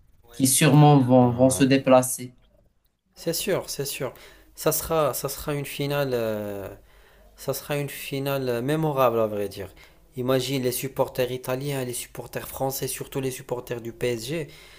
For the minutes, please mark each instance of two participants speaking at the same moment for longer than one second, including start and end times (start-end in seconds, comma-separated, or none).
none